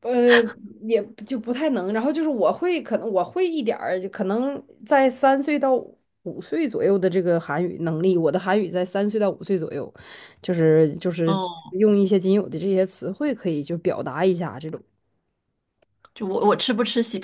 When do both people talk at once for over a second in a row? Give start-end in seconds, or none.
none